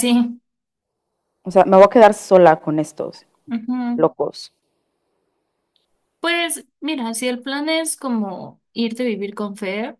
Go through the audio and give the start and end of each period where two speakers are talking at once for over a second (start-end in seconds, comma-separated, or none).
none